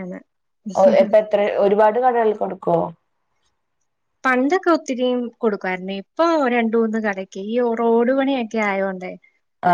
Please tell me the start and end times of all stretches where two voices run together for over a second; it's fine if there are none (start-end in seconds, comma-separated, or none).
none